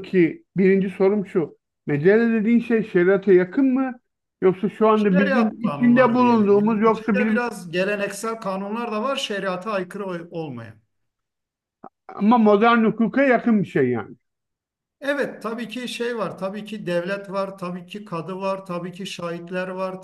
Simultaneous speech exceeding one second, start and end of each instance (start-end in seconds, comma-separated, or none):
4.9-7.5